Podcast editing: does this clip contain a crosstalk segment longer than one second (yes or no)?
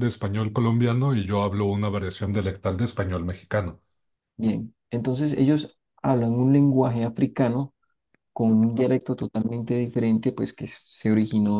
no